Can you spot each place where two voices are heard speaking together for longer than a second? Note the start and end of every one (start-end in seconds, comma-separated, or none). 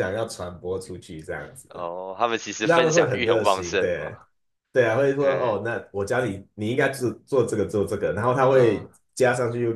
2.7-4.2